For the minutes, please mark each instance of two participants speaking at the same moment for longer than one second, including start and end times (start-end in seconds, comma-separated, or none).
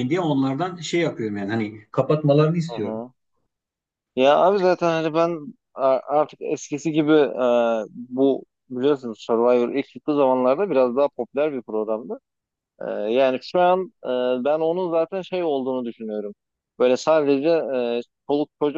none